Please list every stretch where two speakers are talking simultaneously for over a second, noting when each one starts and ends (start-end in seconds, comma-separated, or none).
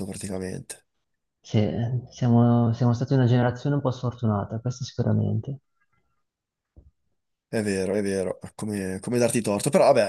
none